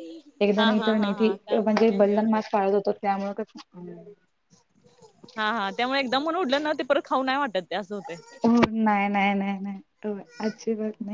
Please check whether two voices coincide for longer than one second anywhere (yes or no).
yes